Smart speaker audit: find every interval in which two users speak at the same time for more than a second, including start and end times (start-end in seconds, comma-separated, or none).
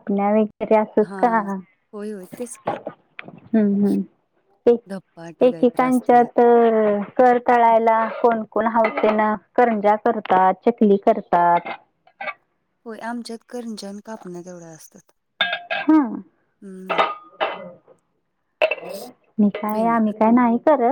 4.9-6.3